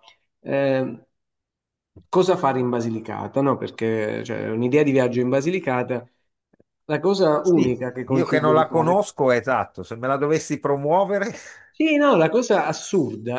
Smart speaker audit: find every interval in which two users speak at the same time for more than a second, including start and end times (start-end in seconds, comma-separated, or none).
7.4-9.0